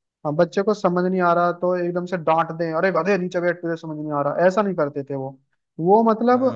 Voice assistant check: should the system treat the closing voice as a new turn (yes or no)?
yes